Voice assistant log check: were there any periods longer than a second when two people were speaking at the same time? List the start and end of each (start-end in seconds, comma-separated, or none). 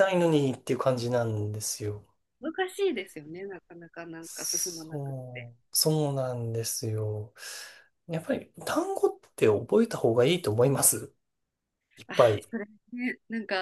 4.2-5.5